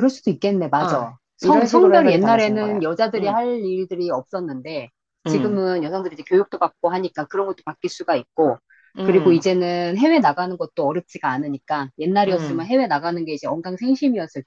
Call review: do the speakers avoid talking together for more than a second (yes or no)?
no